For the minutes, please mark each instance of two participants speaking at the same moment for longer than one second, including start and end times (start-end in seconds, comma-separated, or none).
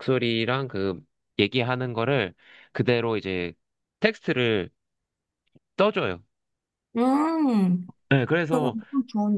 none